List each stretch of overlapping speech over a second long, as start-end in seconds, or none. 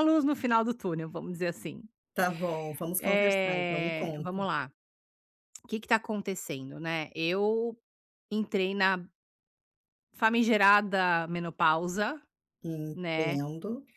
3.0-4.4